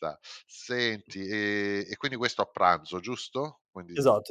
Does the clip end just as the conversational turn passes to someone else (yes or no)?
no